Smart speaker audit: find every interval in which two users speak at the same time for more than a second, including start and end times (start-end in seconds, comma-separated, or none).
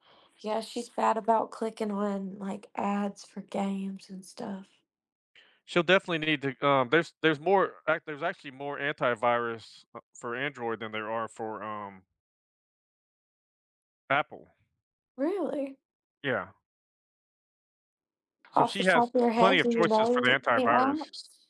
18.6-21.0